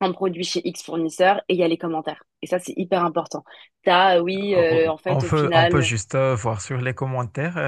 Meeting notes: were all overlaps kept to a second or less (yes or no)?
no